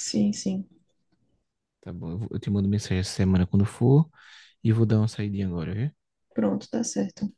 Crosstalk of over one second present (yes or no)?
no